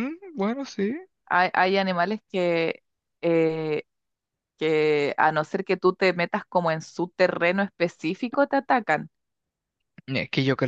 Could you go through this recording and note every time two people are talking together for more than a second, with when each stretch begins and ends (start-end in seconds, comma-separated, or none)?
none